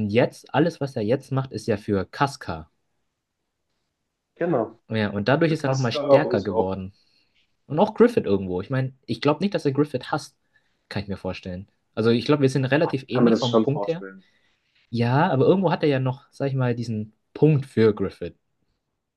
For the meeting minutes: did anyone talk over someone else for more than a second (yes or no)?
yes